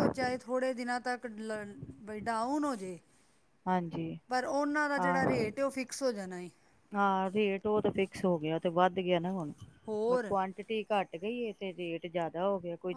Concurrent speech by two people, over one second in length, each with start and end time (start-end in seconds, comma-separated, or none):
none